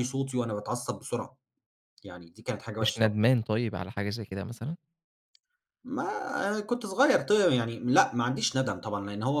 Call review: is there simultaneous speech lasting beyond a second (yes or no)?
no